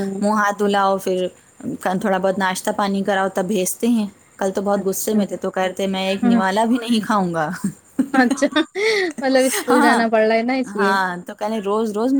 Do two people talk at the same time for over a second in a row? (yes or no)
no